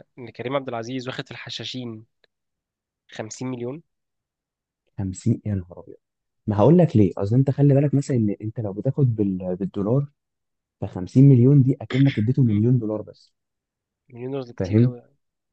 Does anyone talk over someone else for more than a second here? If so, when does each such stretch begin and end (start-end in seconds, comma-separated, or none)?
none